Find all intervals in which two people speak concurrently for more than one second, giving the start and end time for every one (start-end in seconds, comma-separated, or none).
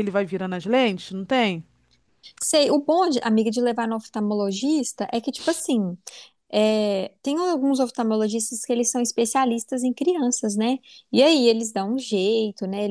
none